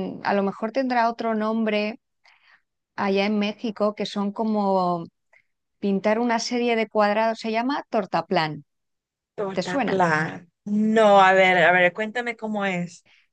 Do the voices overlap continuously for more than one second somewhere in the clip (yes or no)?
no